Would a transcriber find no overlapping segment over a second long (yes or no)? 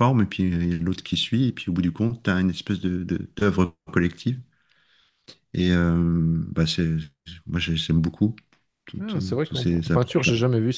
no